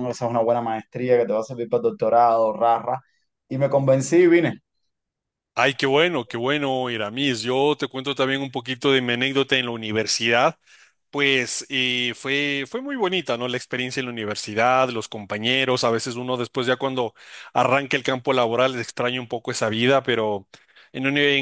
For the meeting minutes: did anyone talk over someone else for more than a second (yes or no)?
no